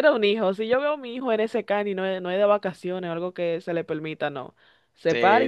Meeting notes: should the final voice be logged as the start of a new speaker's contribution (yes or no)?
yes